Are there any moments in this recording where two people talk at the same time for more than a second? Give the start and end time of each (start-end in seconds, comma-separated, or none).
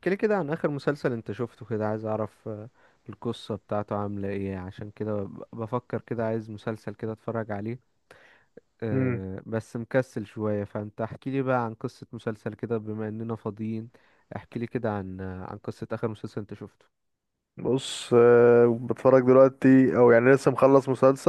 none